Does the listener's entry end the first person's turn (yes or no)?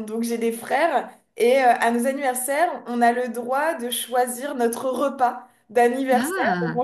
no